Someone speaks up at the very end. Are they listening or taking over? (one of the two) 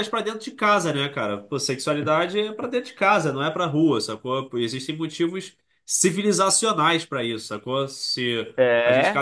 listening